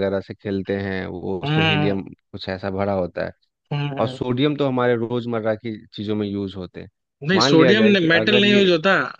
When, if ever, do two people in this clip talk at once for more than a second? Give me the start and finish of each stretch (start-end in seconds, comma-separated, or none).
7.3-8.7